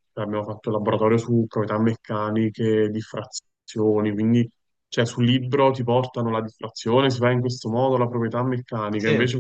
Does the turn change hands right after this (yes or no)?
no